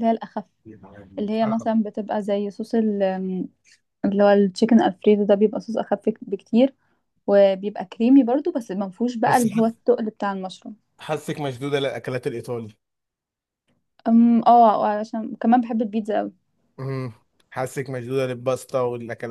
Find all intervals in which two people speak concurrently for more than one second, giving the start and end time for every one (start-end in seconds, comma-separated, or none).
none